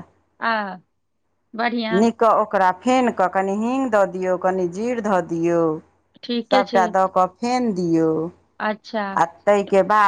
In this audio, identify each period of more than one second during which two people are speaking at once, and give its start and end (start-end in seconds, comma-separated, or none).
none